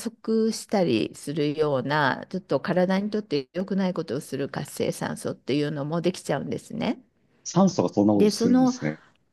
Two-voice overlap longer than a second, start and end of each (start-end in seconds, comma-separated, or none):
none